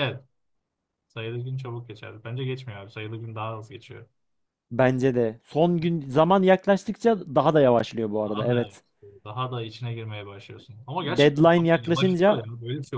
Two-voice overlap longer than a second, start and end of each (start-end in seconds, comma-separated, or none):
11.1-12.5